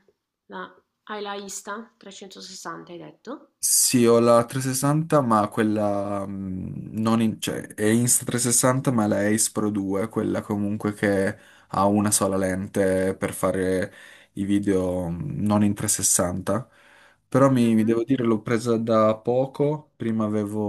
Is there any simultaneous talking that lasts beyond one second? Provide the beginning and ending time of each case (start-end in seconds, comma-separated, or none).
none